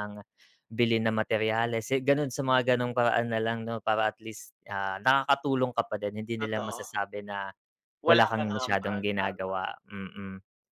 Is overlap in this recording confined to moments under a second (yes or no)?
no